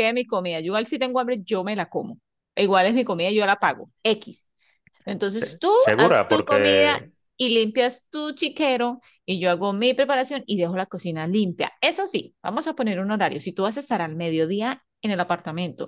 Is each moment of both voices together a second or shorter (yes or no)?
no